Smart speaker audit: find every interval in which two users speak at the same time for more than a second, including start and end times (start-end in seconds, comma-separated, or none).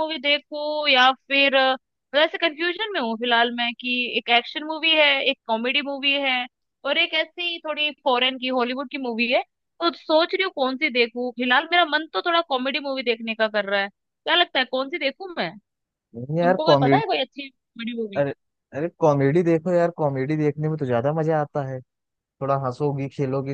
none